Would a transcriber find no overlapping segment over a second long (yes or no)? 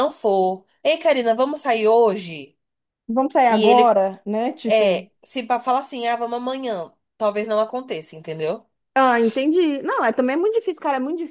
yes